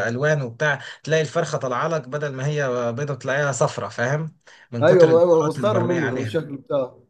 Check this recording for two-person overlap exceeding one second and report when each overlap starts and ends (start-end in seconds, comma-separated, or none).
4.8-6.5